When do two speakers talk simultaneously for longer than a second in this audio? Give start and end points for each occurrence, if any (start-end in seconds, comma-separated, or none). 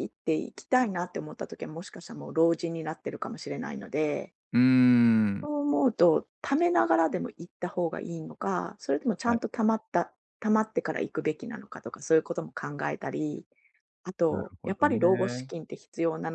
14.3-15.5